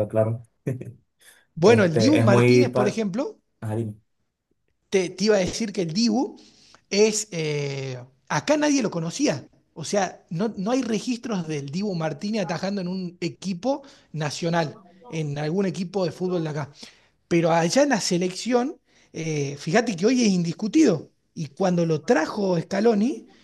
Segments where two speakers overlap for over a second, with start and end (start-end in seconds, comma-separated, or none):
1.6-3.0